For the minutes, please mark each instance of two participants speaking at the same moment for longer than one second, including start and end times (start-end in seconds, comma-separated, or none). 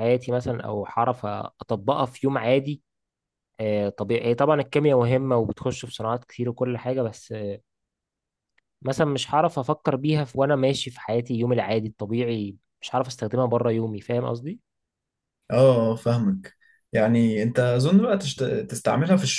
none